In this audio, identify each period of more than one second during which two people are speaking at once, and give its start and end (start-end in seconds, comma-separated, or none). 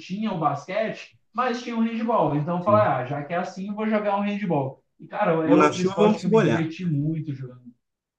5.4-6.7